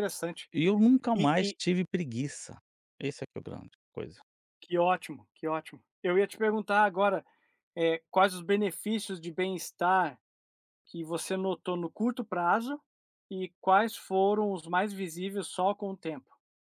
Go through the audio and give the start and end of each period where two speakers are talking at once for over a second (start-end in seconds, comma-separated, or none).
none